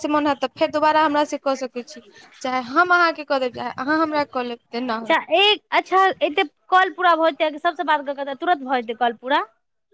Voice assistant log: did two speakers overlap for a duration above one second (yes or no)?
no